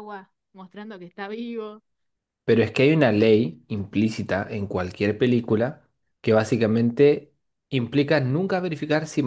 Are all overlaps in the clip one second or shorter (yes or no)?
yes